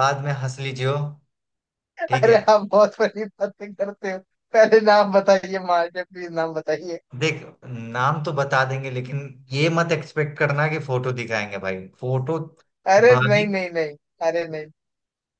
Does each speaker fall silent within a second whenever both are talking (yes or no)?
yes